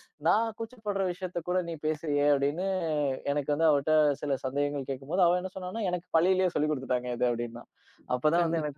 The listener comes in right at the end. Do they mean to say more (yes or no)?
no